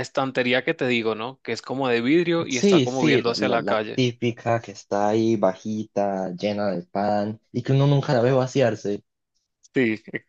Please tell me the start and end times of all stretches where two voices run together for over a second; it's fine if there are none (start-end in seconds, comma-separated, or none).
2.5-4.0